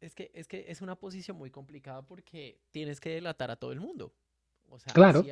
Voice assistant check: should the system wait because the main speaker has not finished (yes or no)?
yes